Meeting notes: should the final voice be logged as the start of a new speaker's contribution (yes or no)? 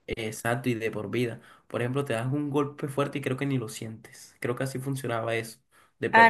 yes